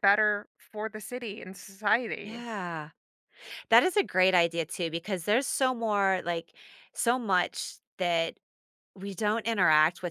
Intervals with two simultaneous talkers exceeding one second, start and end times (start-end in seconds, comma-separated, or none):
none